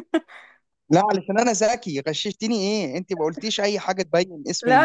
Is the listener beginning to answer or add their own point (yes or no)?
yes